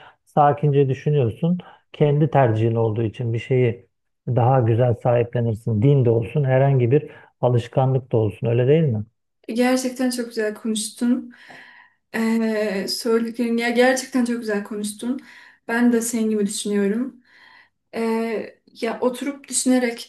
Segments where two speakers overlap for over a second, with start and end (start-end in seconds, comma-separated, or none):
none